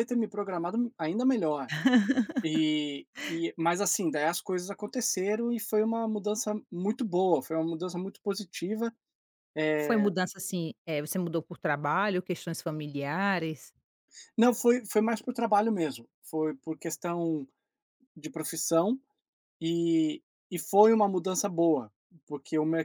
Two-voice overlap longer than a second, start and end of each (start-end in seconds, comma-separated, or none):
none